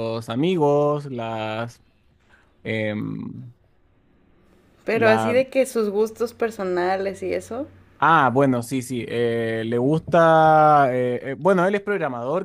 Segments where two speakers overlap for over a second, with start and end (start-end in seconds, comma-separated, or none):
none